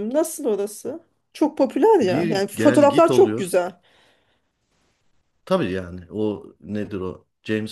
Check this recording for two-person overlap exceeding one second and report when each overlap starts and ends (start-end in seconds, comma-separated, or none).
2.0-3.5